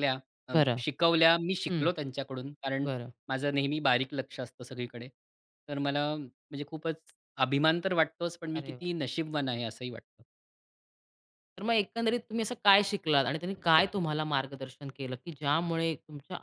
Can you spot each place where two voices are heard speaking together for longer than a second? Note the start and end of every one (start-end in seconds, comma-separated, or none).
none